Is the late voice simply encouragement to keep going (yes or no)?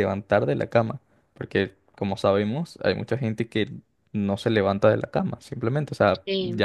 yes